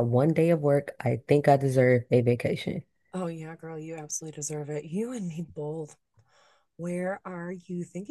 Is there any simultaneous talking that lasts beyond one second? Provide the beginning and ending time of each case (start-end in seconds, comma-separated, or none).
none